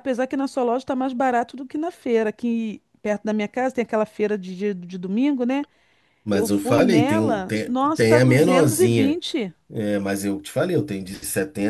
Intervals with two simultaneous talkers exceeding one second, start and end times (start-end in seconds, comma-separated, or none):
6.3-9.2